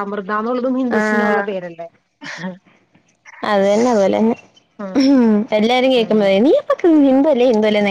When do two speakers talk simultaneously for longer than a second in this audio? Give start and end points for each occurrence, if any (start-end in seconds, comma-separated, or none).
none